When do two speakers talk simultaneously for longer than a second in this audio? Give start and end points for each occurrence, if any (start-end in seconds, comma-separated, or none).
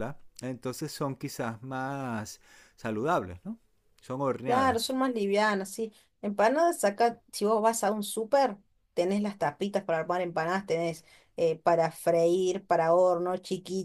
none